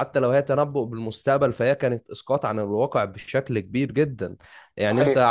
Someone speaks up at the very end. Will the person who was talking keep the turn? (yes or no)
yes